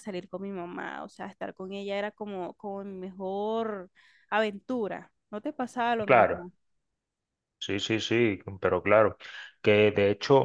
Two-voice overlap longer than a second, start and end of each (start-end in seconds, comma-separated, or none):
none